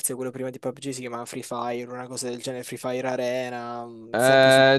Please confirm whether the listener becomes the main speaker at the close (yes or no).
yes